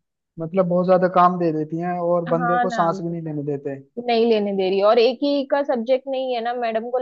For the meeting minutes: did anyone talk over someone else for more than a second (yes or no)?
no